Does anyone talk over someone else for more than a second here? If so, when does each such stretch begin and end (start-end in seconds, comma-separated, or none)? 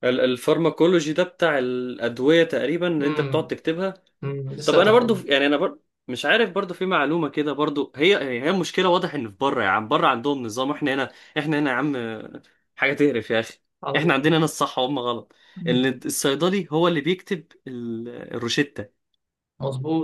none